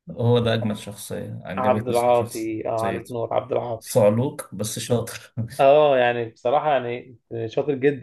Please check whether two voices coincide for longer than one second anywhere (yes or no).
yes